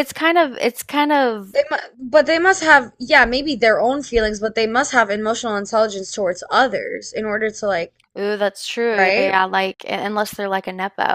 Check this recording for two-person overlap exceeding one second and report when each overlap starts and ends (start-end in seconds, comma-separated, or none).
none